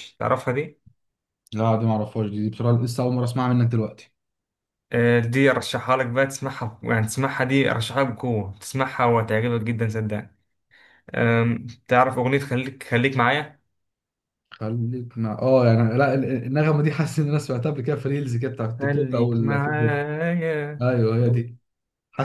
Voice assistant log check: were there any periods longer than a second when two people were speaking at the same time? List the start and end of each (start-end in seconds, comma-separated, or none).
18.8-20.0